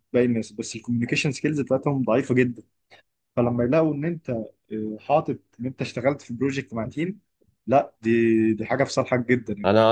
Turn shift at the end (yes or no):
yes